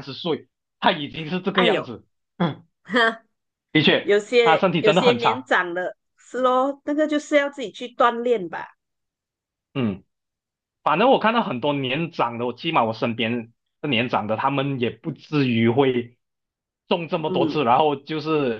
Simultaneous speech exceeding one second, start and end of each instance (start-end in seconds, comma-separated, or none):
4.0-5.5